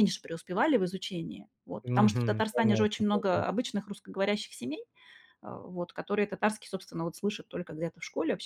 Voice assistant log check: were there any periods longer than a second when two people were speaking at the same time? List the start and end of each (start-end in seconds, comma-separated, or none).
1.8-3.5